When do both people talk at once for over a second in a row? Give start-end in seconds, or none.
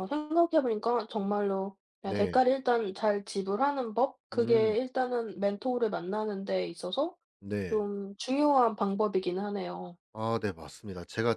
none